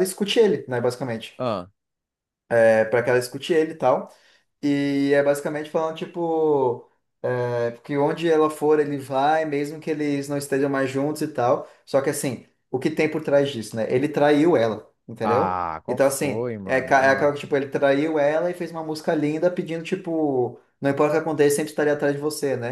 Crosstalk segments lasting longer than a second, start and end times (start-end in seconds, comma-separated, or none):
15.2-17.3